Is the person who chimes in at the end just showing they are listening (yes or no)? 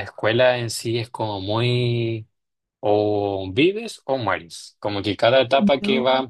yes